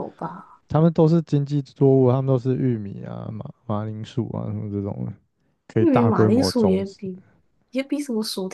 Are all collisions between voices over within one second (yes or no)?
no